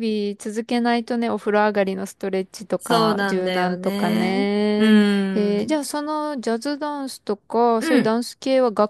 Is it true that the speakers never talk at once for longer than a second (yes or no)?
no